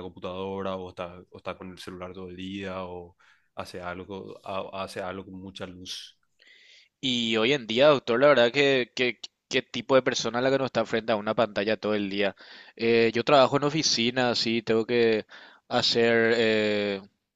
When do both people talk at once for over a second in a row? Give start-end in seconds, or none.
none